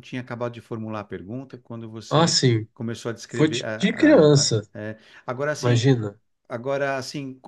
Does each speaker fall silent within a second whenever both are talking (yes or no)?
no